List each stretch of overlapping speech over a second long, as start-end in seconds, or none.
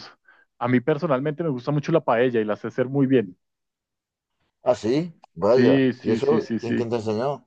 5.5-6.9